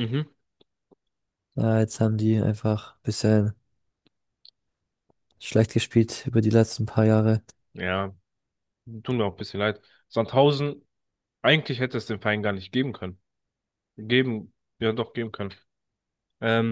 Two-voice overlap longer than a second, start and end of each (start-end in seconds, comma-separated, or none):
none